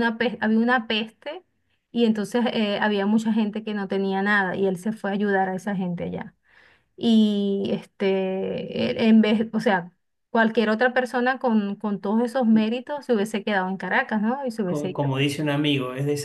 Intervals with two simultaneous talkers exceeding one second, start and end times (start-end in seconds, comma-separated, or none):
none